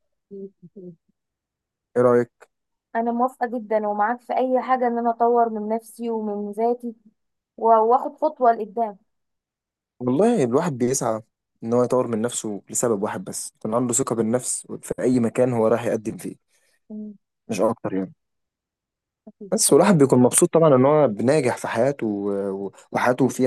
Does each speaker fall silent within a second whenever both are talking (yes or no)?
yes